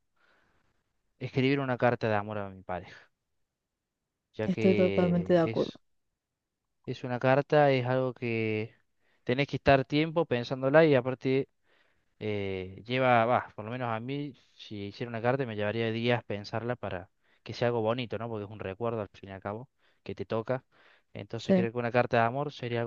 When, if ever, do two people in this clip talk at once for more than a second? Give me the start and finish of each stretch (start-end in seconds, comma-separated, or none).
4.4-5.7